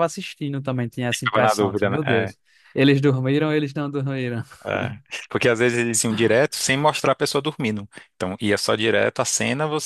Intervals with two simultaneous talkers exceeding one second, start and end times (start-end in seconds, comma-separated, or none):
1.1-2.4